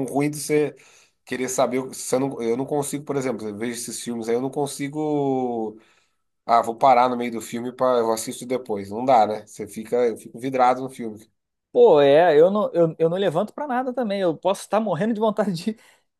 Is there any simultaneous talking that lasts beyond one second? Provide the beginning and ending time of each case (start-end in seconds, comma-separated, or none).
none